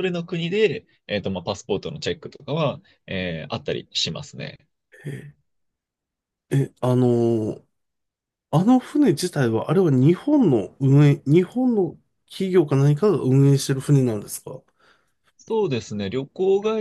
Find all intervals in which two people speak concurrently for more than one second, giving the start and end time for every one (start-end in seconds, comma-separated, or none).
none